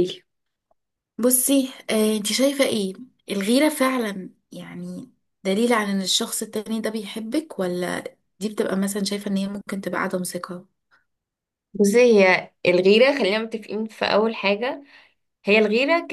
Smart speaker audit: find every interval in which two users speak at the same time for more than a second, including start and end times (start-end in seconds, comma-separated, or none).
none